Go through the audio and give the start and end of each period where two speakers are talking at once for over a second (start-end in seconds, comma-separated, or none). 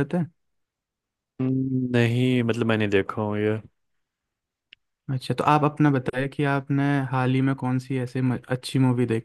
none